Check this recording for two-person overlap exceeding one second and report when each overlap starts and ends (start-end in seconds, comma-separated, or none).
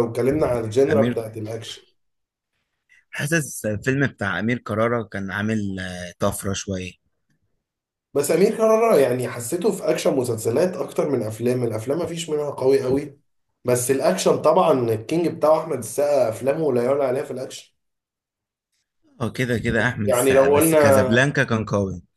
20.0-21.4